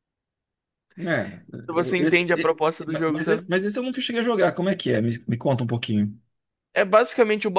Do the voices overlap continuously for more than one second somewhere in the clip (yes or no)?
yes